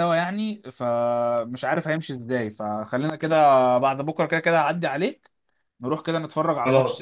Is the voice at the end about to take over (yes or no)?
yes